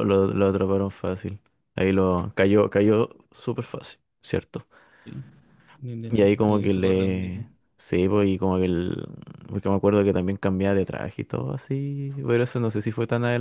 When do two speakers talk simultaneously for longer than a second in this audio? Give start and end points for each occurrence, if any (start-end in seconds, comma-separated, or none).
6.1-7.4